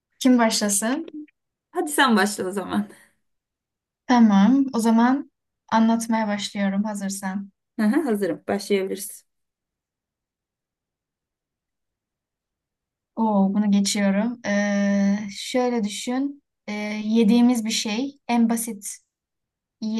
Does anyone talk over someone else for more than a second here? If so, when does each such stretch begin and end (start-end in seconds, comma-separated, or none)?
none